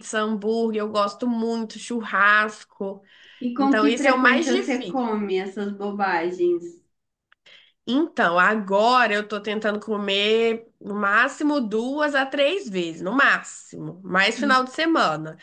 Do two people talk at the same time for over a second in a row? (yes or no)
yes